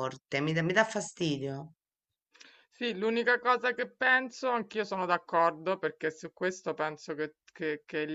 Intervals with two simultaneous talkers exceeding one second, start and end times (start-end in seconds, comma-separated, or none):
none